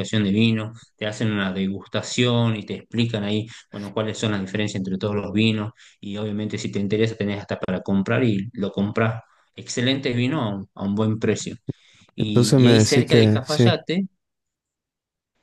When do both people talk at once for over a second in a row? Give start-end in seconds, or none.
12.2-13.8